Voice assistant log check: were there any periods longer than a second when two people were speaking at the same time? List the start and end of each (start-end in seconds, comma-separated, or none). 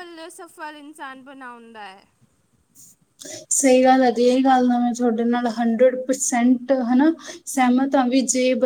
none